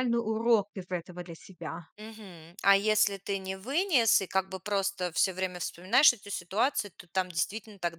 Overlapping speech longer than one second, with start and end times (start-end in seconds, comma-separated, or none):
none